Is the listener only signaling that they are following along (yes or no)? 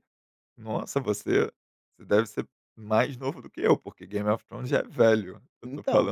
yes